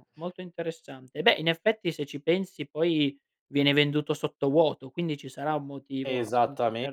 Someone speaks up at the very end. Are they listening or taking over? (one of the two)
taking over